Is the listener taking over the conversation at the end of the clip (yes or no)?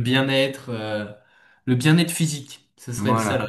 yes